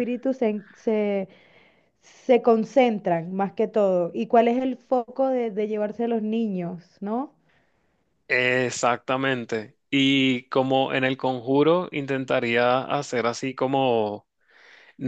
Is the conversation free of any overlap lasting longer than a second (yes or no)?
yes